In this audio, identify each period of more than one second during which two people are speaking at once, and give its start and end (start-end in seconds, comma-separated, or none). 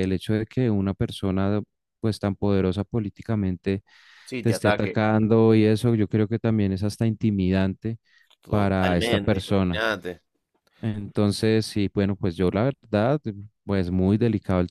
8.5-9.8